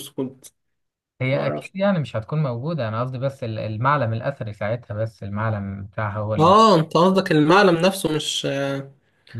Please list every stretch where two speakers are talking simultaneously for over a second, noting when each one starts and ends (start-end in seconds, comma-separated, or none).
none